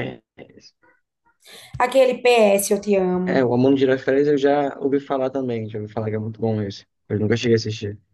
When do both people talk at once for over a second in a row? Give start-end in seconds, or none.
none